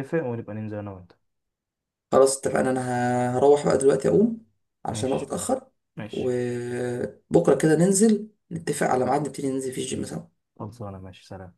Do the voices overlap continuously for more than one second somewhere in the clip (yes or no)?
no